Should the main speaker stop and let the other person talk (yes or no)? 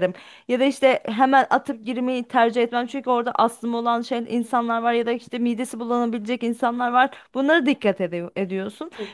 no